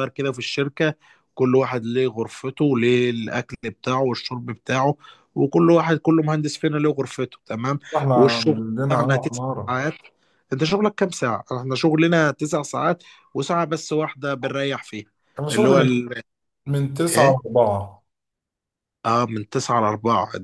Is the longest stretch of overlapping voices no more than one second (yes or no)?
no